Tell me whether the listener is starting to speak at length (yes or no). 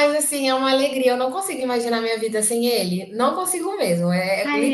yes